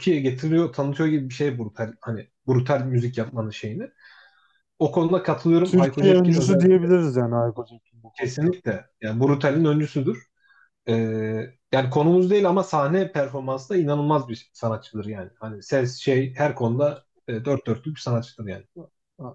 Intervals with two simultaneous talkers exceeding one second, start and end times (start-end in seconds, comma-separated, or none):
5.6-6.8